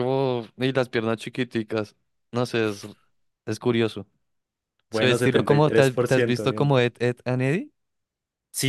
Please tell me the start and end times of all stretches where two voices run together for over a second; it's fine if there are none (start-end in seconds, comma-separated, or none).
4.9-6.8